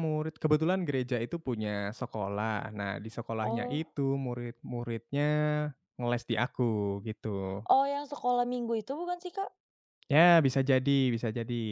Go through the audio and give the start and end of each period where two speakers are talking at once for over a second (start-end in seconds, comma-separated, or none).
none